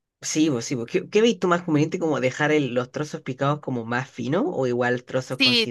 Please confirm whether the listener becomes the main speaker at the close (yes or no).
yes